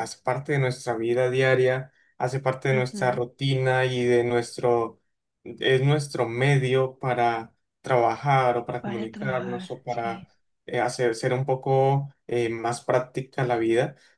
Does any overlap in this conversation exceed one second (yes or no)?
yes